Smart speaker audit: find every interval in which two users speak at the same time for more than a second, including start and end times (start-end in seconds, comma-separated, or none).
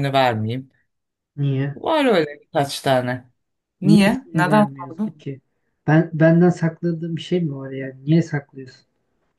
3.8-5.2